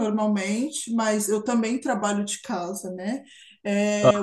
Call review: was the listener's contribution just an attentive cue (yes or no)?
yes